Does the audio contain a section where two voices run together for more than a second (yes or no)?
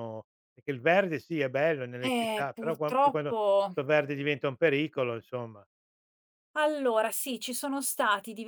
yes